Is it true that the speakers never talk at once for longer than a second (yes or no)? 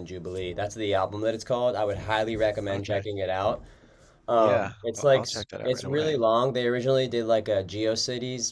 no